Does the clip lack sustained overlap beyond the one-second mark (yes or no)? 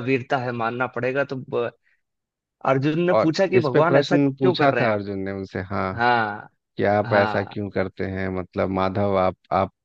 no